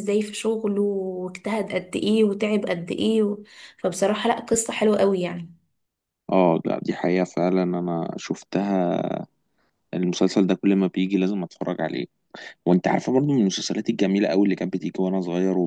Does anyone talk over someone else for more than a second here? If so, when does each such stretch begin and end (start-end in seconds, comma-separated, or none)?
none